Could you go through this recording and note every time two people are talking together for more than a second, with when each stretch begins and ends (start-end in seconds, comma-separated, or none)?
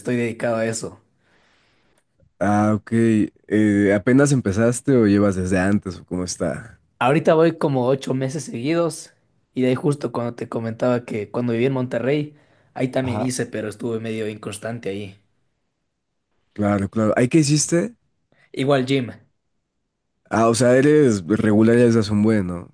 none